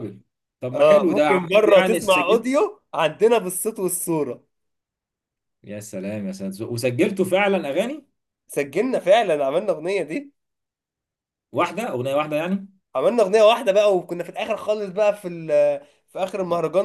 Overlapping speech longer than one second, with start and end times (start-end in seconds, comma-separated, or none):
0.7-2.5